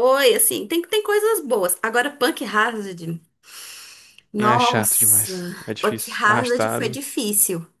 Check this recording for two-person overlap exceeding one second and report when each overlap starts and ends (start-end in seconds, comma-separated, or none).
4.4-7.0